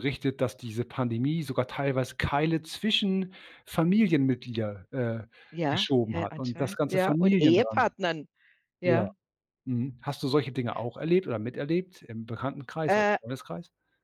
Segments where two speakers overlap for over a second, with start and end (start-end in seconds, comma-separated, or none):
5.7-7.9